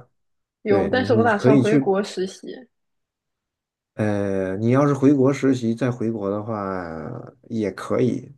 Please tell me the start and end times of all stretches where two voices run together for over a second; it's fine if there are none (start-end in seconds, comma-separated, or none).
0.7-1.9